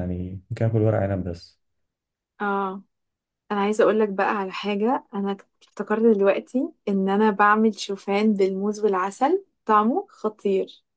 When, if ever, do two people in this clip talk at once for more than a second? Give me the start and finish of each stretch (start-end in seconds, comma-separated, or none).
none